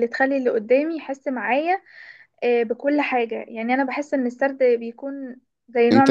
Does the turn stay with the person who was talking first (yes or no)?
no